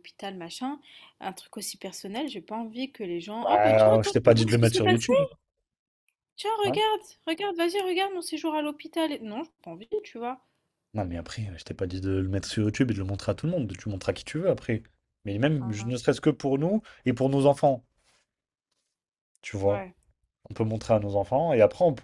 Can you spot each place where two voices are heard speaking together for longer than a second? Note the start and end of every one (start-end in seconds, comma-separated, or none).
3.4-5.0